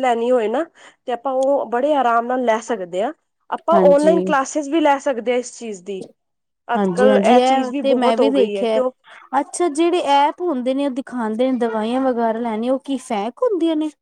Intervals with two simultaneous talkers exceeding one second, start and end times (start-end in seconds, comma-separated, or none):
6.8-8.8